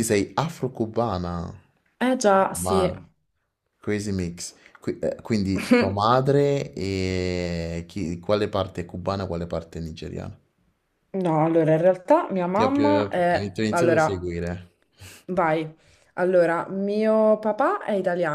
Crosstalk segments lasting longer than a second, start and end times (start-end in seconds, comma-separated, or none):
12.6-14.3